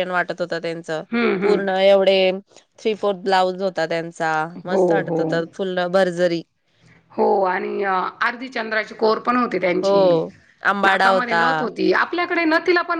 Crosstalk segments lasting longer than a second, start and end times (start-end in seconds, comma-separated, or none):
none